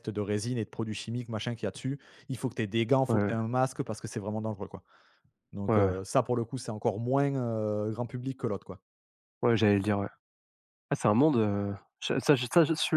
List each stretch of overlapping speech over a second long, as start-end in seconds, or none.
none